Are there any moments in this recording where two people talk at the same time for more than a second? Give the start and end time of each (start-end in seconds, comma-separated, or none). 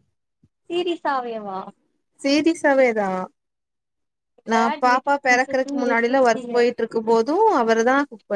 4.5-6.5